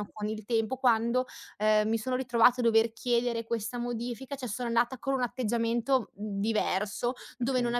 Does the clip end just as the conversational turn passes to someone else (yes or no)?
no